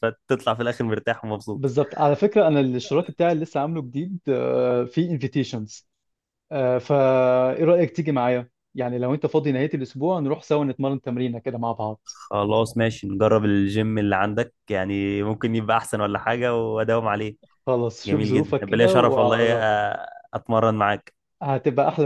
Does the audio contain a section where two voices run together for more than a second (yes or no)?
yes